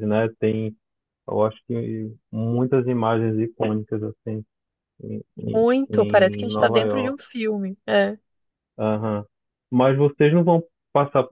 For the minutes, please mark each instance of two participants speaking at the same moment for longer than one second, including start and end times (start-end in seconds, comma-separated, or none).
5.5-7.2